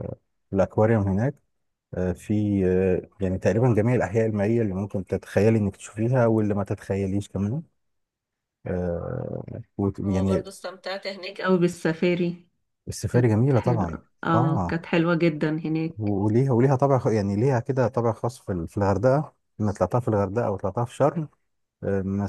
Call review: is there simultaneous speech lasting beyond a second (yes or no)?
yes